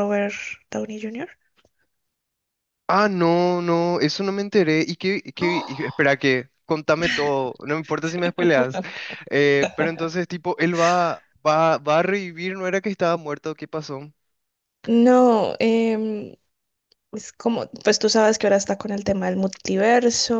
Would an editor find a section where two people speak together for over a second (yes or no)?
no